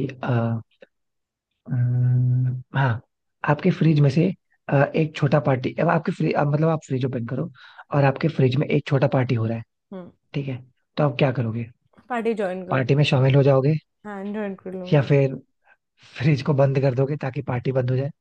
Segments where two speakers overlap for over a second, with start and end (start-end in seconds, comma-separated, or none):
none